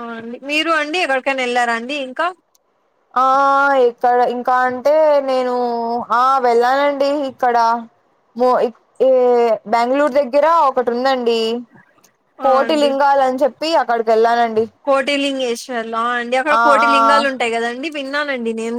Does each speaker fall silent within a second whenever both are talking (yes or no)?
yes